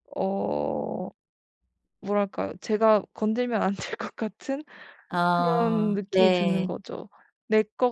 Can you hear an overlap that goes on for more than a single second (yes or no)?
yes